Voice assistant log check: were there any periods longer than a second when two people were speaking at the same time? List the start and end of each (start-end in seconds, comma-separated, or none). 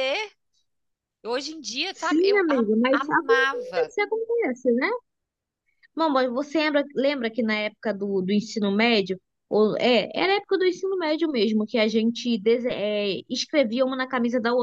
1.9-3.9